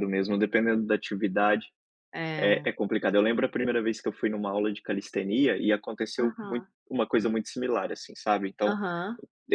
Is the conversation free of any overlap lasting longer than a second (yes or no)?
yes